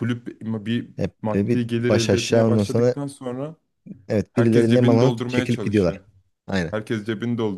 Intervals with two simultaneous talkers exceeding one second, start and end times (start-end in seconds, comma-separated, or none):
1.0-3.0, 4.3-6.0